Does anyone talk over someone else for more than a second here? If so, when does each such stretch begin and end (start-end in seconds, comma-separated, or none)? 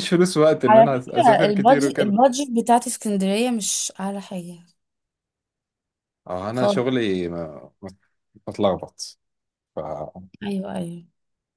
0.7-2.2